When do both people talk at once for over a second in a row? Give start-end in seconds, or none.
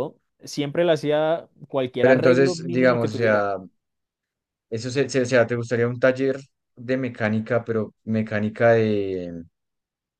2.0-3.5